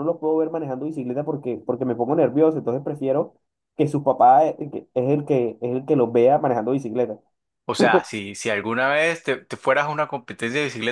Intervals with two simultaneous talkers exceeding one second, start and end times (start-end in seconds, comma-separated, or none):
none